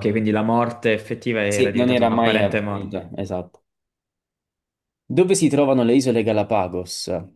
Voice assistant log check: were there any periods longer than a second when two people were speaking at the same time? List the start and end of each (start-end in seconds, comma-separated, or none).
1.5-3.0